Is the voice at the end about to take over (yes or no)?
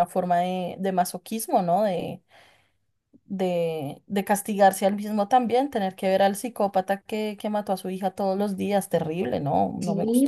yes